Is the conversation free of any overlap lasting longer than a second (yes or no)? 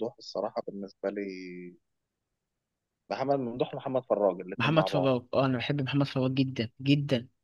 yes